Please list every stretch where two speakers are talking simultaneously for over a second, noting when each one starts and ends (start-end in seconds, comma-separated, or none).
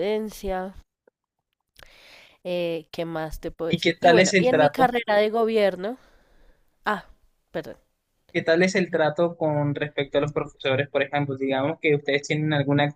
3.7-4.9